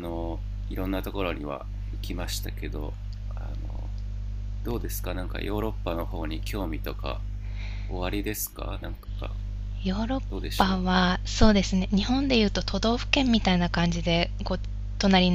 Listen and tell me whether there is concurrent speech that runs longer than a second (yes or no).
no